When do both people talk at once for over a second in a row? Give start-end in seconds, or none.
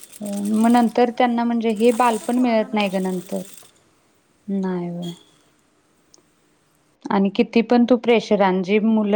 1.9-3.4